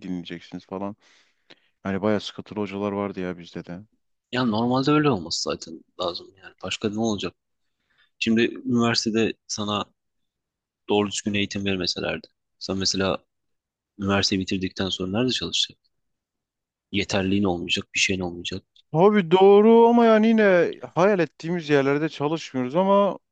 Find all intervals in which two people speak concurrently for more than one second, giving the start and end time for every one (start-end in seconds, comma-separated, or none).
none